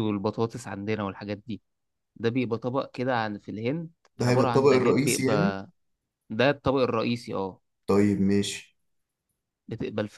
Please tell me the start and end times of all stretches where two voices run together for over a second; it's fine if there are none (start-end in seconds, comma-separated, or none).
4.2-5.6